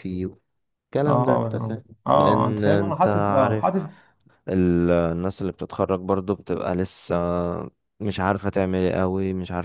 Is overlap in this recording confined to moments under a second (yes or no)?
no